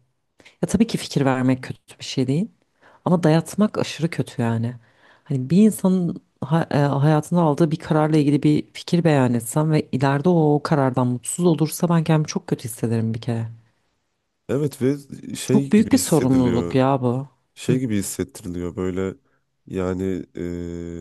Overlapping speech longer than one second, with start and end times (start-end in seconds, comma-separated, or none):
15.5-16.8